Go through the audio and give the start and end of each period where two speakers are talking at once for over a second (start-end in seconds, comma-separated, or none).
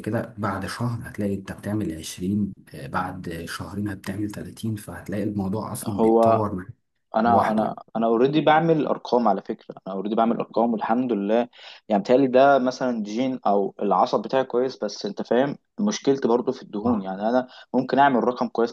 none